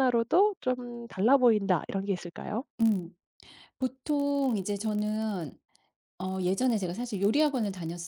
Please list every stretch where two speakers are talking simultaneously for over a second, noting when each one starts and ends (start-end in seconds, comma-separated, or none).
none